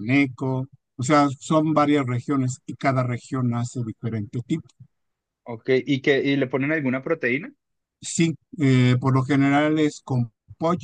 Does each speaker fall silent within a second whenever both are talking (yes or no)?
yes